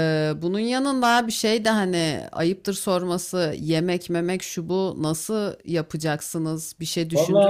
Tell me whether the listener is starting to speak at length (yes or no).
yes